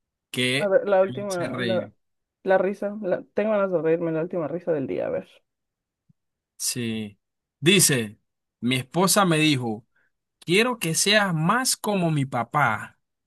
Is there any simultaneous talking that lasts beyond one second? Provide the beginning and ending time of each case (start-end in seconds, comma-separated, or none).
0.6-1.9